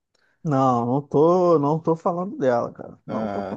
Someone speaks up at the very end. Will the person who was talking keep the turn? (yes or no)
no